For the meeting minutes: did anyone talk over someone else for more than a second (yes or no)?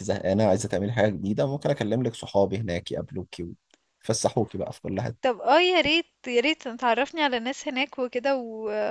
no